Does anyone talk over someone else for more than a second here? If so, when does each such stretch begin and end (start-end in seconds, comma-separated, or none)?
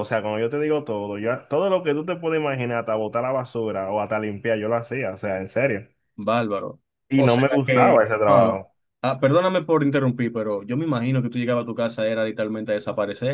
7.1-8.6